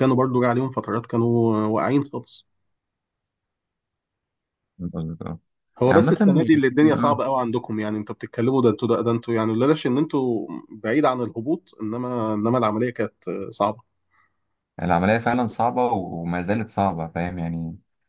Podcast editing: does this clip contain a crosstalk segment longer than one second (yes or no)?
yes